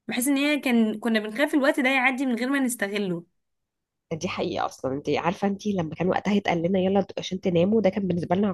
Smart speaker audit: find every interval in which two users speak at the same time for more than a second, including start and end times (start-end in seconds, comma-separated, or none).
none